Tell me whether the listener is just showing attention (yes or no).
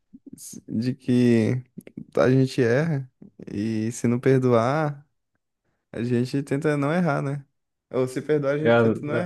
yes